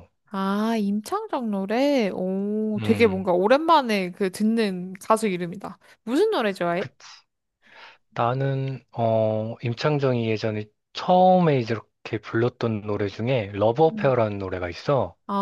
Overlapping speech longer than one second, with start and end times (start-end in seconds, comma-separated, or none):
none